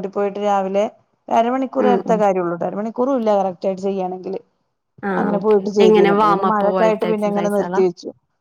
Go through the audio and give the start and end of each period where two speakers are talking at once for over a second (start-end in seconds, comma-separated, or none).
5.2-7.8